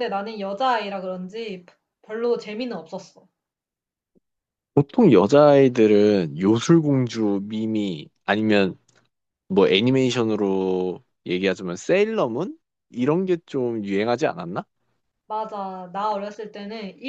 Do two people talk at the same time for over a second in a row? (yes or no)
no